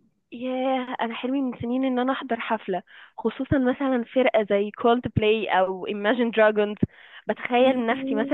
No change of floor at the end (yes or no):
yes